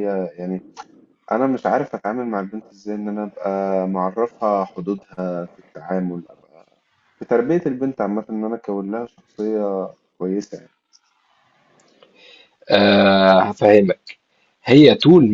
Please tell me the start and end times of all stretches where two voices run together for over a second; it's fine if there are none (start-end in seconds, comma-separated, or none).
none